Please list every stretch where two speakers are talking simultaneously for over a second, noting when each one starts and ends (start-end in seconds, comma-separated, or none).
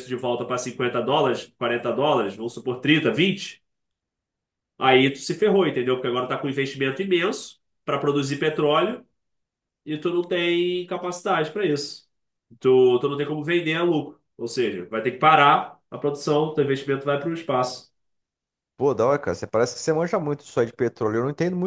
none